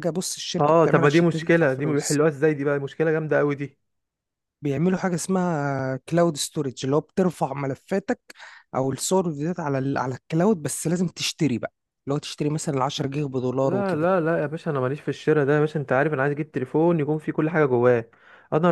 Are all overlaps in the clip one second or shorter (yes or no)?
no